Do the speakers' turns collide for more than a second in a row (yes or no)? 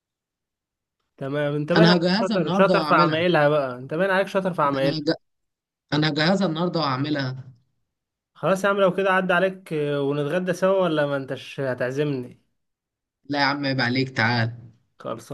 yes